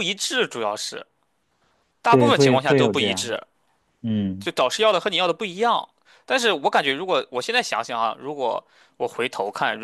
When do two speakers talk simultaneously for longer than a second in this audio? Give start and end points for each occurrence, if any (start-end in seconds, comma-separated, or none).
2.1-3.4